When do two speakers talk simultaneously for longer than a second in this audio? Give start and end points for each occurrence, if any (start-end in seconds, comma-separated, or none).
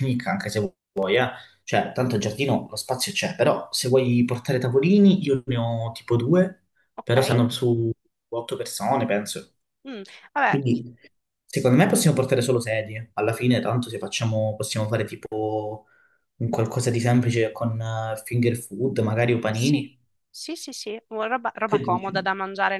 none